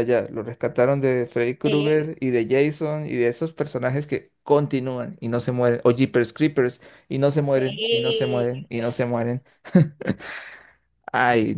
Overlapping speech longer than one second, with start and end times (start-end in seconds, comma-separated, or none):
7.5-9.3